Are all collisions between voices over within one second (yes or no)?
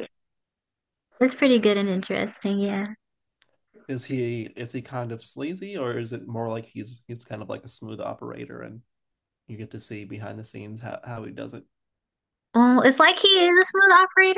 yes